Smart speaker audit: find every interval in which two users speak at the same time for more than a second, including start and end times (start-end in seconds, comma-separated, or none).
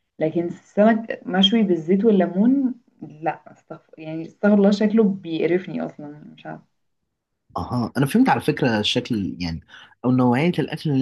none